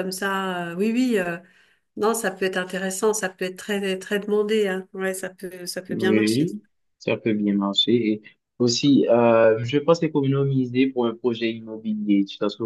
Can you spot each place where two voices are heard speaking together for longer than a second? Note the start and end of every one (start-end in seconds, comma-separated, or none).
none